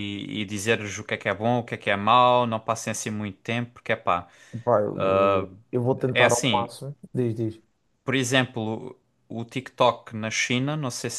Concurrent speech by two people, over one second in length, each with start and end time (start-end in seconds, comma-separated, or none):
none